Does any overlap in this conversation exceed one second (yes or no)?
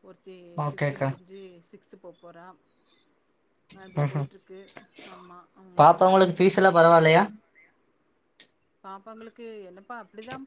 yes